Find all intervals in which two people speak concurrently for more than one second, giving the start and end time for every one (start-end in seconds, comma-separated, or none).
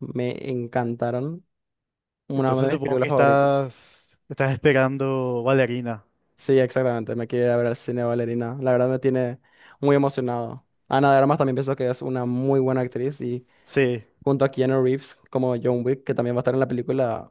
2.4-3.7